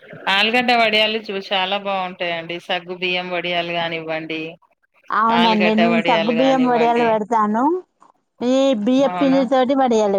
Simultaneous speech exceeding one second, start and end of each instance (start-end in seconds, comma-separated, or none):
5.4-7.1